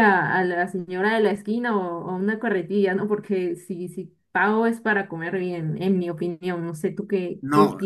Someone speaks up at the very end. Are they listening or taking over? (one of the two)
taking over